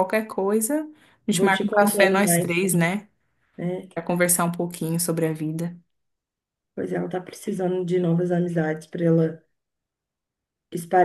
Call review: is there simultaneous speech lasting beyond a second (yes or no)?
yes